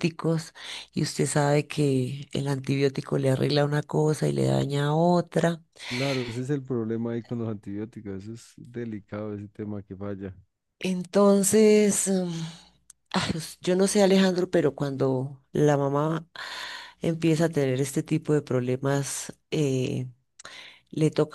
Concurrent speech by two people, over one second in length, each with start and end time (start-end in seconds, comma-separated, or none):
none